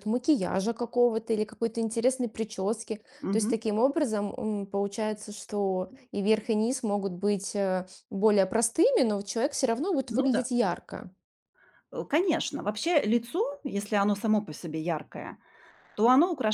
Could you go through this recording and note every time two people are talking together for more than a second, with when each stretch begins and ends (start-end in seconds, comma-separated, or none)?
none